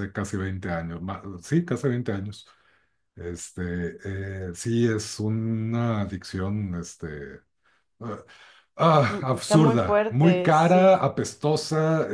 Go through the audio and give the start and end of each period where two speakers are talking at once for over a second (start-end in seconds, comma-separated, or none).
9.1-11.1